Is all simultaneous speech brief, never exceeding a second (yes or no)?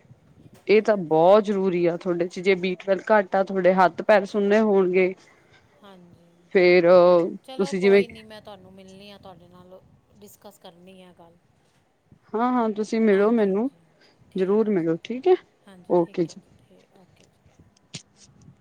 yes